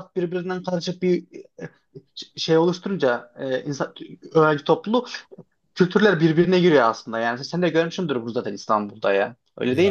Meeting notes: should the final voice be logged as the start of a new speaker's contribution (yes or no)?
yes